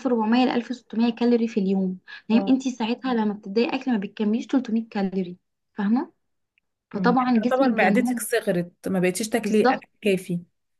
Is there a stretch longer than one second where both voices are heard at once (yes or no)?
yes